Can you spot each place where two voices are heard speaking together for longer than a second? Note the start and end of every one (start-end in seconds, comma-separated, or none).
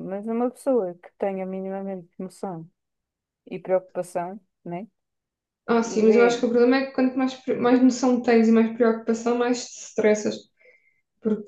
none